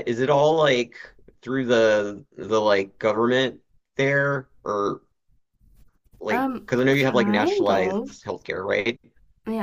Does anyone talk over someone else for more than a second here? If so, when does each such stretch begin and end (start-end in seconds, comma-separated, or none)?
6.3-8.1